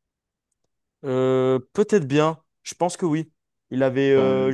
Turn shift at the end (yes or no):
no